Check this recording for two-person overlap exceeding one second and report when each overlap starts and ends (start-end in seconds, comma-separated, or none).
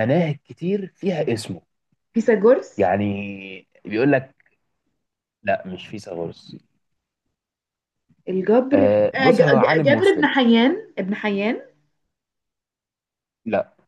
8.7-10.3